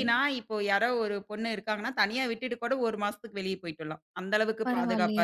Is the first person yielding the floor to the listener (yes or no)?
yes